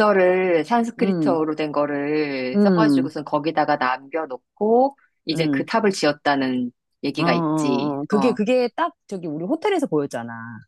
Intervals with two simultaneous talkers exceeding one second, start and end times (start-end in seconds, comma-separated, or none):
7.2-8.4